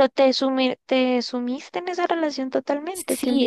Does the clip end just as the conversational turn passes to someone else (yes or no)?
yes